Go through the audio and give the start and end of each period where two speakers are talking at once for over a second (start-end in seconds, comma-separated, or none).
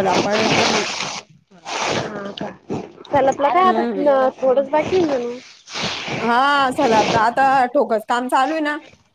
none